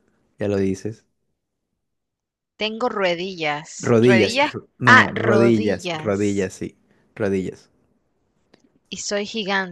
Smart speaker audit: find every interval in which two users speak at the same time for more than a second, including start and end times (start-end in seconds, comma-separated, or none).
3.8-6.5